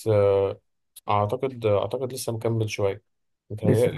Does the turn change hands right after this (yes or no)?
no